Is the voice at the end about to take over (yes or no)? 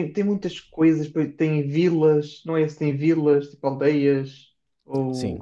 yes